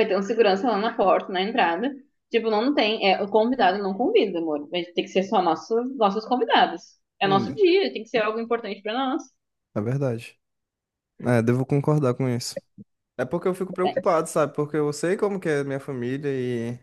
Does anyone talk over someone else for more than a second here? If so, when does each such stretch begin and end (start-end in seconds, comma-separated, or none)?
none